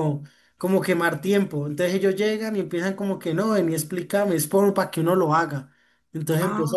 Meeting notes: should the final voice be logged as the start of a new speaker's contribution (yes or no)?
no